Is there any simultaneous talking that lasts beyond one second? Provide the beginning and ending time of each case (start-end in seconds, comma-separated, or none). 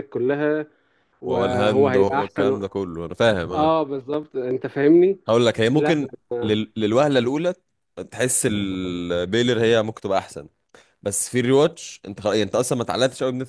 1.2-2.6